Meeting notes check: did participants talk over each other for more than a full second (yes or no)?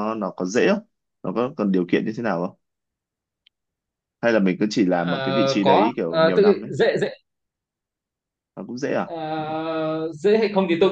yes